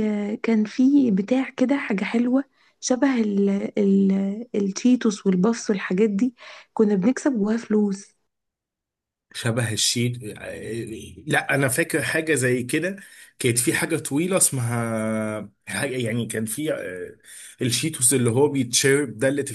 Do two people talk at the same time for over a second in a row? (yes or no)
no